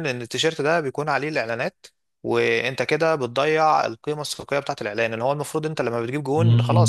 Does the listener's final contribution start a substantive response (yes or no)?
no